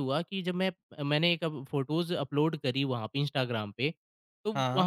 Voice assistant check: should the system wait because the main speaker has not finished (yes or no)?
yes